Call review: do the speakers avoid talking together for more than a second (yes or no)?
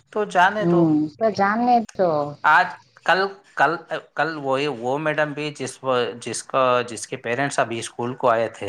yes